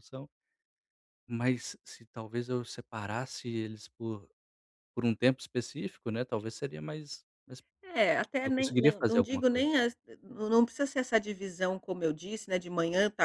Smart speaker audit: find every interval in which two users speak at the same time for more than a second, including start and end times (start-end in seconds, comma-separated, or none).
8.4-9.7